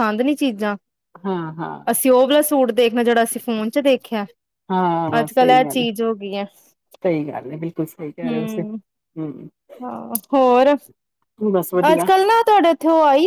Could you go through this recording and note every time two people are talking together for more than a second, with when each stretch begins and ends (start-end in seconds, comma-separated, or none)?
none